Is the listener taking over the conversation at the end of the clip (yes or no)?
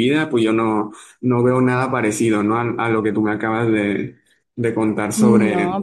yes